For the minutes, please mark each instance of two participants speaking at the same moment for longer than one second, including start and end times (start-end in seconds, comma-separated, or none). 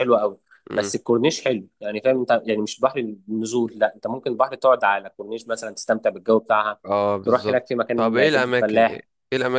7.2-9.0